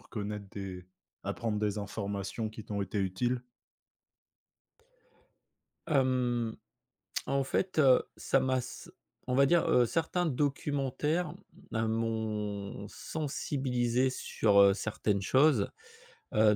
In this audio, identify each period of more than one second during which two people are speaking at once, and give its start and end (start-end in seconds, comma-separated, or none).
none